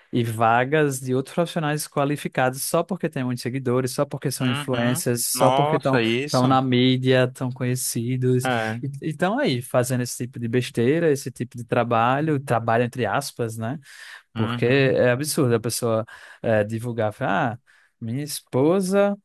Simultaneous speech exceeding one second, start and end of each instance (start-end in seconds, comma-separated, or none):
4.4-6.5